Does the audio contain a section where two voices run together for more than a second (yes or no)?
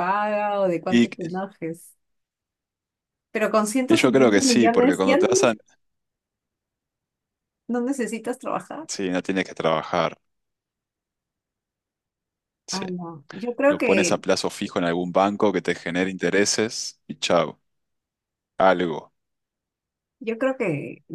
yes